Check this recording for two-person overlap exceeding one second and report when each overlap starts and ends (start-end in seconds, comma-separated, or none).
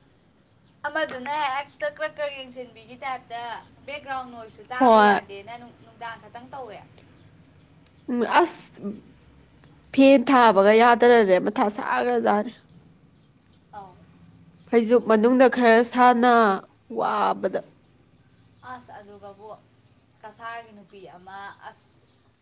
none